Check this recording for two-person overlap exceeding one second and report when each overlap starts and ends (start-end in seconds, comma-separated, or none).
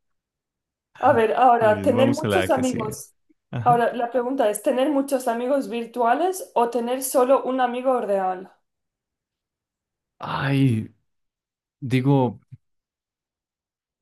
1.6-3.0